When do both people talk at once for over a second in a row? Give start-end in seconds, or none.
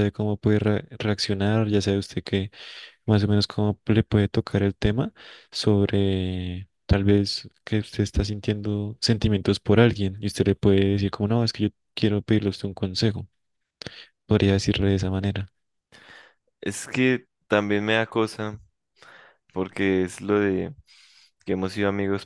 none